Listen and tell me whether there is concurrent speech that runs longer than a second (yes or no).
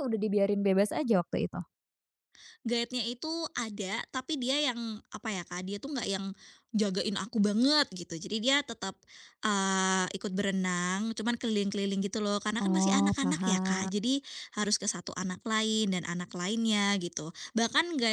yes